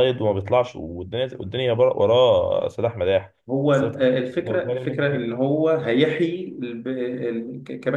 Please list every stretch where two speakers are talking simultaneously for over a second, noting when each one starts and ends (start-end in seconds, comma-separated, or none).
3.7-5.3